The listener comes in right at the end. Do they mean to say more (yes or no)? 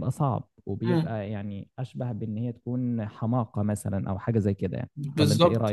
yes